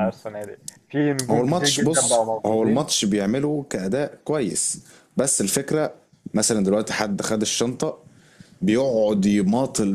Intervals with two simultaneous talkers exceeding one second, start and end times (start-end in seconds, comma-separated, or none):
1.3-2.9